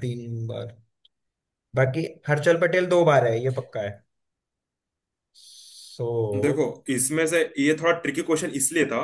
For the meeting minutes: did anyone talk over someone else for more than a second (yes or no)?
no